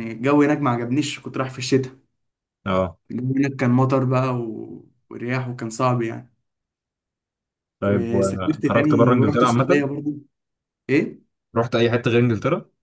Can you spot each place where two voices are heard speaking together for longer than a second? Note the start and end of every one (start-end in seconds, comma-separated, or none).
7.8-9.9